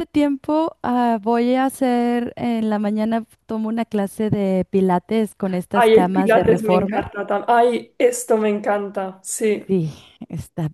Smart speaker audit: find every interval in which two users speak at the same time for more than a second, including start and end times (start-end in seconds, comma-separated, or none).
5.7-7.1